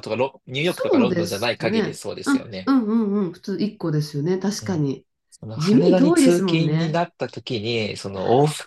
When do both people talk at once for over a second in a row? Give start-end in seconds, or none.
0.6-2.7, 5.6-7.0